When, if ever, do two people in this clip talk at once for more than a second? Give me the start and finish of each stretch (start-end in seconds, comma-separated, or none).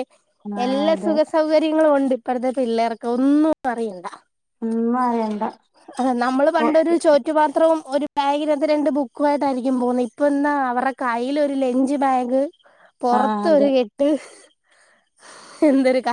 none